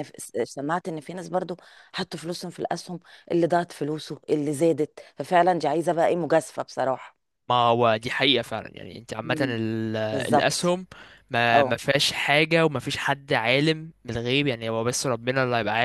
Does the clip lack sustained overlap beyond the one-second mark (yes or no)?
yes